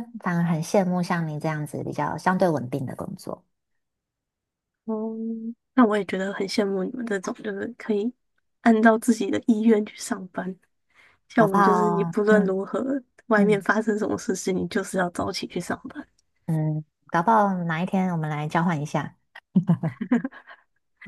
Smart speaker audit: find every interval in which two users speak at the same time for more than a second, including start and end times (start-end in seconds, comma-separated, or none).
11.3-12.6